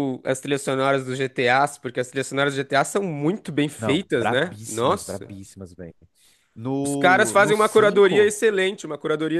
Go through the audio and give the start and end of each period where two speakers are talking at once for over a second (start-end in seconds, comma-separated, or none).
3.8-5.3, 6.8-8.3